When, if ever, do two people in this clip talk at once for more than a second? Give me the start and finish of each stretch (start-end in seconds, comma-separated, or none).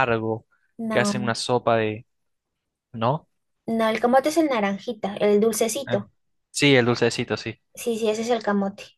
none